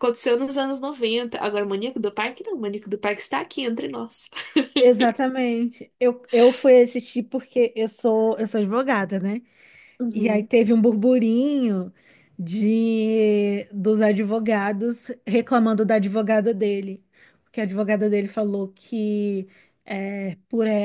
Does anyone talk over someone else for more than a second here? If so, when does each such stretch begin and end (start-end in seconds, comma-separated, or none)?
none